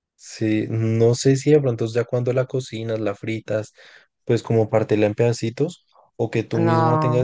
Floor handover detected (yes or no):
yes